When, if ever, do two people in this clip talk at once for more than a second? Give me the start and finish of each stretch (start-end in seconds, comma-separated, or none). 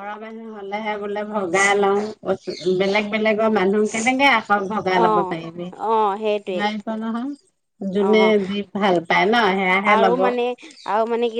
none